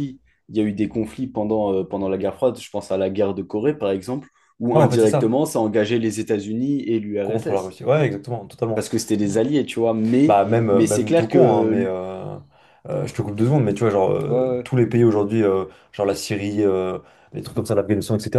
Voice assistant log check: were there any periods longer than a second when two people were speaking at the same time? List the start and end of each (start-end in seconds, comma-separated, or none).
10.3-11.9